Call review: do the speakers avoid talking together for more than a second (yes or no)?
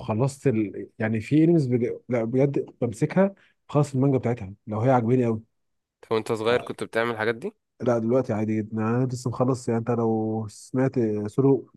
yes